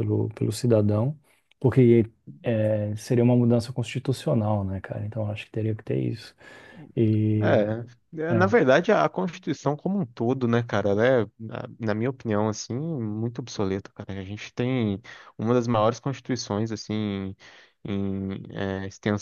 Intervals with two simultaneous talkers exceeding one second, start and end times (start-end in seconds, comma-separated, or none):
none